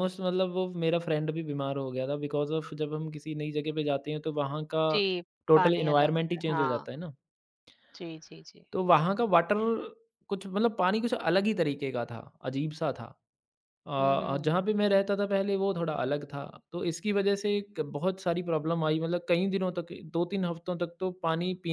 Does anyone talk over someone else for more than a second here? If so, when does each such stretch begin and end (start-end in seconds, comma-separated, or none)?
5.5-6.9